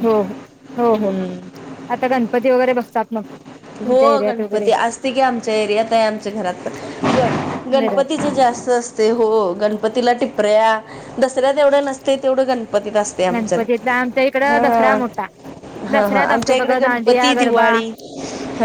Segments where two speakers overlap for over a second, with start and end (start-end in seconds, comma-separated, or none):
15.9-17.7